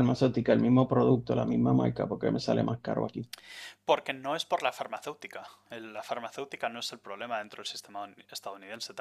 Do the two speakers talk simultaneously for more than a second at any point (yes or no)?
no